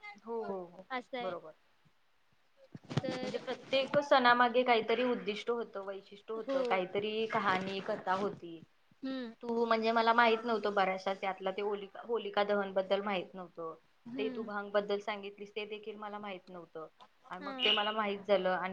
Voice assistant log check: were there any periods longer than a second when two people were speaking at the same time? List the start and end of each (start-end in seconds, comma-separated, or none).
none